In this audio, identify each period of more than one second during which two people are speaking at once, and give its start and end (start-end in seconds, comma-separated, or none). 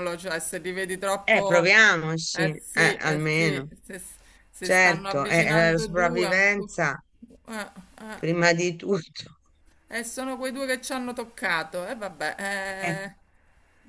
2.3-3.7, 4.6-6.8